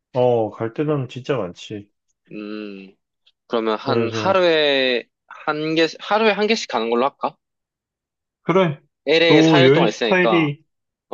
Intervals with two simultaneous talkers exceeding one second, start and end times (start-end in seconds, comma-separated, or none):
9.3-10.5